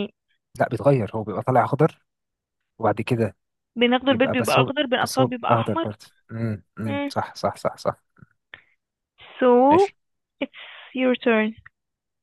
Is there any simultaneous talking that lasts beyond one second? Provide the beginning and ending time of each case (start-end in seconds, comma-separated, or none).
4.1-5.9